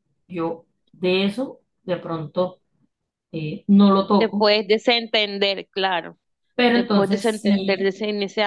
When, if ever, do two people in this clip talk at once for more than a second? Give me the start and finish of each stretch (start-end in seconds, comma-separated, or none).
6.7-8.0